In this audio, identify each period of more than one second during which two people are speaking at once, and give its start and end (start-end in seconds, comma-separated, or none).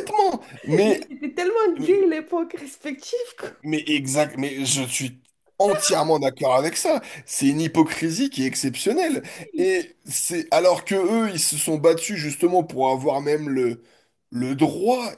none